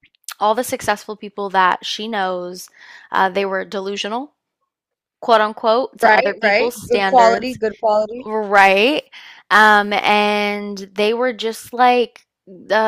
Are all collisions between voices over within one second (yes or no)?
no